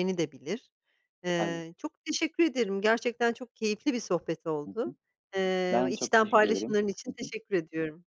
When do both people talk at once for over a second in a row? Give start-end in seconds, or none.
5.7-7.3